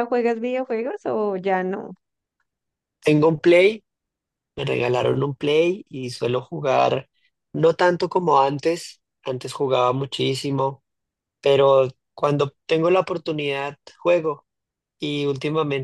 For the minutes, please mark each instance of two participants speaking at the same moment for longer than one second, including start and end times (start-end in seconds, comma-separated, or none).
none